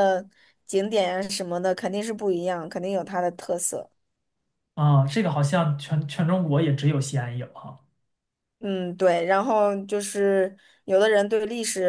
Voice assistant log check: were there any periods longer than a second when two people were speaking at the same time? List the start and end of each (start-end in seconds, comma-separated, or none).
none